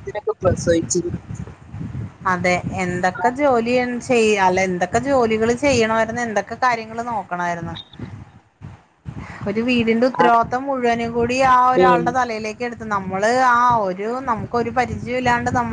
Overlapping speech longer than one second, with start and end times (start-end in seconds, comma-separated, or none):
none